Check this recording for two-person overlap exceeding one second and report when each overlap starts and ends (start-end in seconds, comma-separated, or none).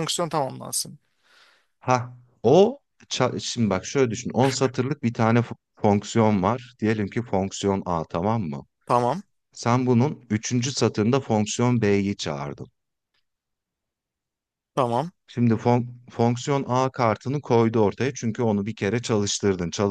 none